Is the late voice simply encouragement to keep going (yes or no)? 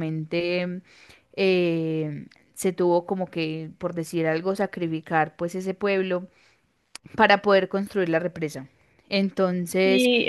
no